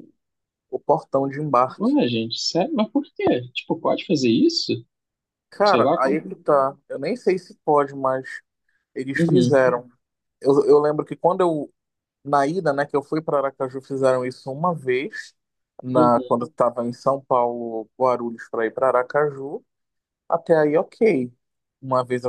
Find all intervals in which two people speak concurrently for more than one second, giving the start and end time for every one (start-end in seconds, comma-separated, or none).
none